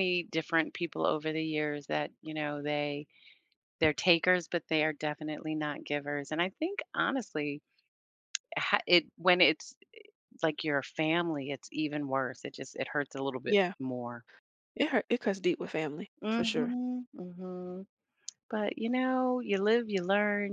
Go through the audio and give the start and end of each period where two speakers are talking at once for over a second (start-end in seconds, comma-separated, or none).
none